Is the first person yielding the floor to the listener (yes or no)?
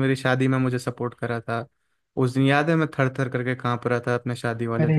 yes